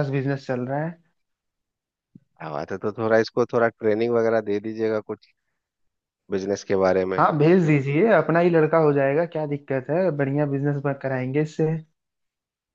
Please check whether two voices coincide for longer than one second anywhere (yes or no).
no